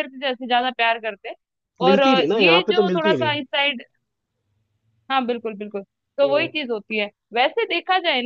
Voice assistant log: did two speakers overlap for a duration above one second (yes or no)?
yes